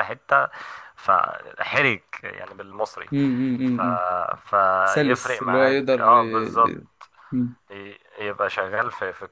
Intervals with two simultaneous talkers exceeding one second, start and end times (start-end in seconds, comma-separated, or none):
4.8-6.8